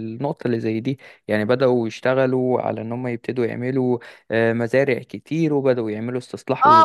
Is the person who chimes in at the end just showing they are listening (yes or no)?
no